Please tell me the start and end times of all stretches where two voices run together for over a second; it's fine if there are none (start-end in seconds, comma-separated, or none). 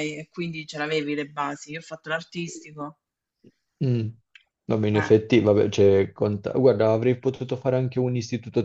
none